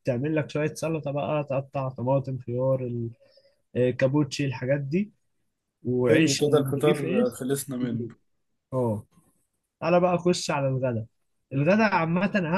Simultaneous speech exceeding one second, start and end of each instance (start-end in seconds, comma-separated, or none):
6.1-7.4